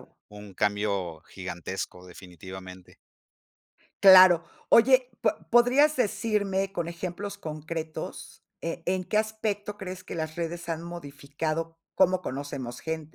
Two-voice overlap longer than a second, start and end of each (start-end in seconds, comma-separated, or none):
none